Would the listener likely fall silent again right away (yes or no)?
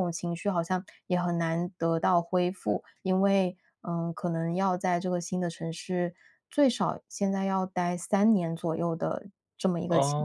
no